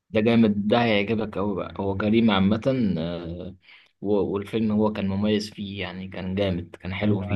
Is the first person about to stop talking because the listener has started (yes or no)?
yes